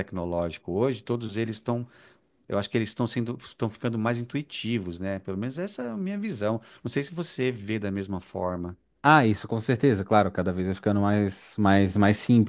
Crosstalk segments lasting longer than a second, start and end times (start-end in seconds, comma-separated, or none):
none